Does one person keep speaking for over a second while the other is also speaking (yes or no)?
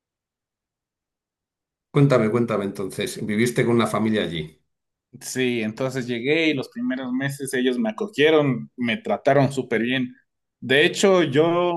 no